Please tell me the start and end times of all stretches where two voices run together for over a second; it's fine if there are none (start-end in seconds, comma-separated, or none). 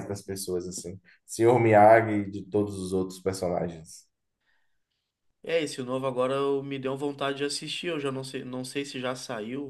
none